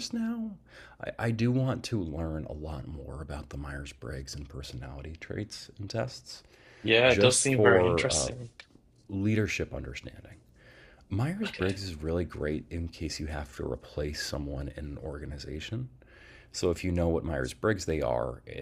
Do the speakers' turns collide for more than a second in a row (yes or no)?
yes